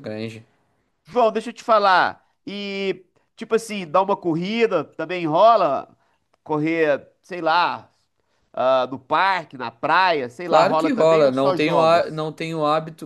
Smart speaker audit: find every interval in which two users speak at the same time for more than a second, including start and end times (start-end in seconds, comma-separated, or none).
10.4-12.3